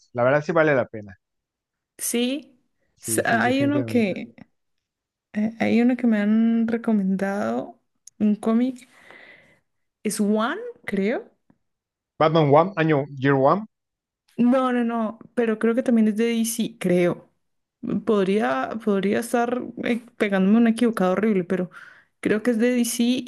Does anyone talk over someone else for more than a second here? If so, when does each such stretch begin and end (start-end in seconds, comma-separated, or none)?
3.0-4.2